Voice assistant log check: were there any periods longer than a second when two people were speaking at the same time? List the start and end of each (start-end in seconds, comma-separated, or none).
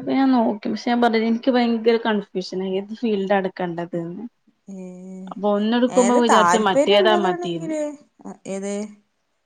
6.2-7.8